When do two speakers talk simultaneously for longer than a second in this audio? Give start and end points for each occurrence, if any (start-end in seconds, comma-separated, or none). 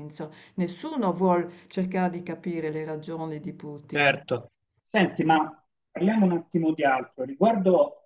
none